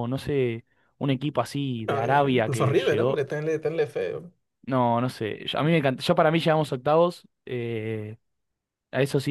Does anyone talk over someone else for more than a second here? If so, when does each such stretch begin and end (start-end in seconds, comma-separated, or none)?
1.9-3.2